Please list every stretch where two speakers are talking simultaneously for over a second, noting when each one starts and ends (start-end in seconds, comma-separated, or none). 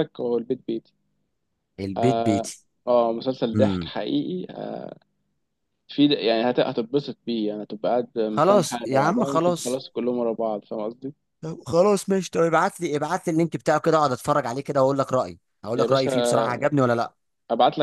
8.3-9.8